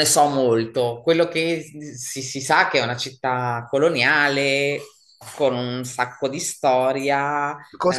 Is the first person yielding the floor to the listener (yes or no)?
yes